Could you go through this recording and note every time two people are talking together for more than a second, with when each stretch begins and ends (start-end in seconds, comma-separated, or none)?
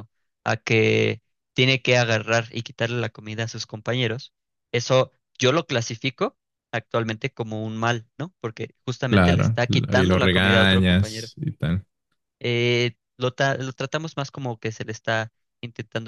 9.1-11.3